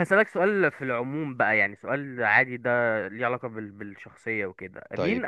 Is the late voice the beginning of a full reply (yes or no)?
no